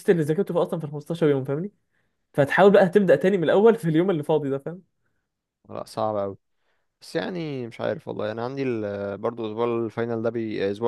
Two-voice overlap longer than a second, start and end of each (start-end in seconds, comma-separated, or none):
none